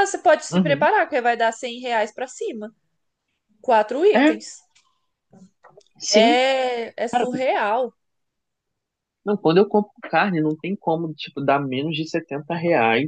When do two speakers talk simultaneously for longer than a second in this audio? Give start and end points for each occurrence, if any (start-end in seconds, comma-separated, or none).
none